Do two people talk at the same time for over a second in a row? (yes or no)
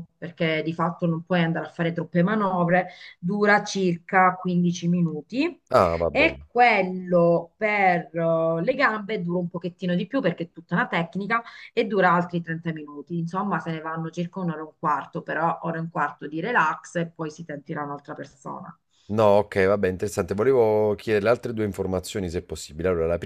no